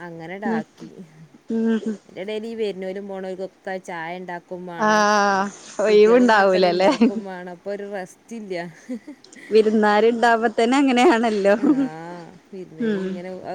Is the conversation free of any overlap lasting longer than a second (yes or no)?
no